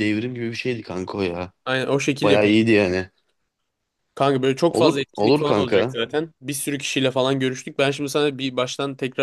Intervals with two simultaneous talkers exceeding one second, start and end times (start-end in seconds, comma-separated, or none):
4.7-6.0